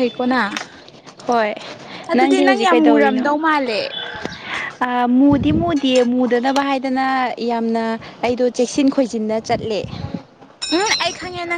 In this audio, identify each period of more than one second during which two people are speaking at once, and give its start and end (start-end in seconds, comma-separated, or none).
none